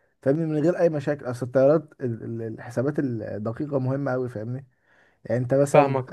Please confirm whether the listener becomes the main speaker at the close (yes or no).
yes